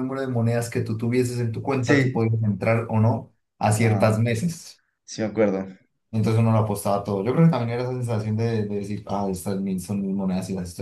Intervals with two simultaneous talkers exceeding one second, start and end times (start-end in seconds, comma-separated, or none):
none